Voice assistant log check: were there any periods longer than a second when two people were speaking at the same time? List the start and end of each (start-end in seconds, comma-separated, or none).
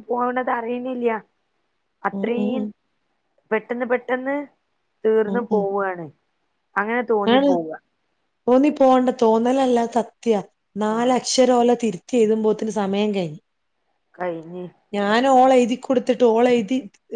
none